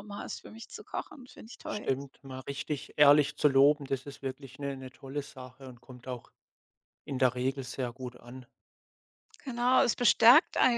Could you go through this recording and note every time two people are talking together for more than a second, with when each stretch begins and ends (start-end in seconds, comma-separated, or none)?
none